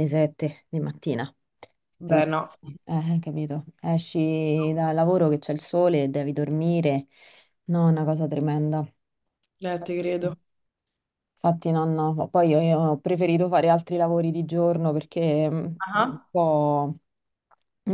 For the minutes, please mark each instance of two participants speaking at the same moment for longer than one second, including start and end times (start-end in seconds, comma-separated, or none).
none